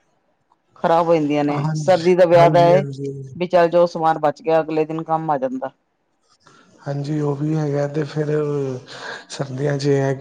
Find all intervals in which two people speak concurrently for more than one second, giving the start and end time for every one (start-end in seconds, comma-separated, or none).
1.5-3.1